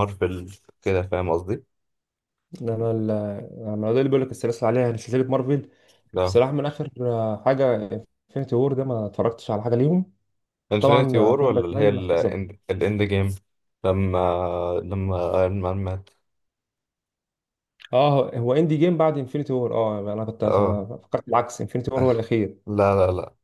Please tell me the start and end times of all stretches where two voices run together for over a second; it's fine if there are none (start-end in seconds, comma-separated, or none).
10.8-12.4